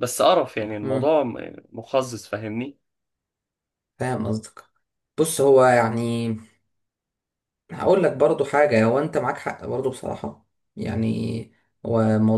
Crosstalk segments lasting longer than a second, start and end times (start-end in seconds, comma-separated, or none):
none